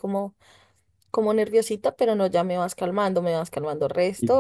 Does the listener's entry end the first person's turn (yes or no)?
no